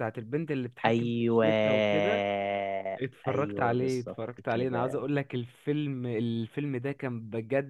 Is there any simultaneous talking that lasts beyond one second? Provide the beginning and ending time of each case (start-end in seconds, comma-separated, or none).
3.3-5.0